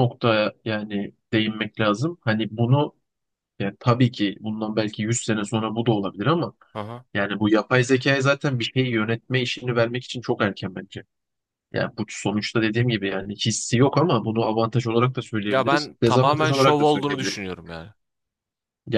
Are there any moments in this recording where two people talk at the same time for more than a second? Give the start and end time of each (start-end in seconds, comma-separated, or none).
15.5-17.4